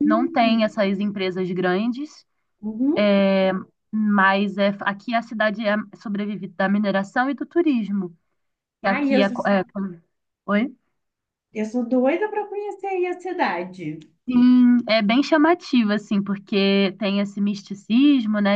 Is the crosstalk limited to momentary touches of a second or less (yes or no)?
yes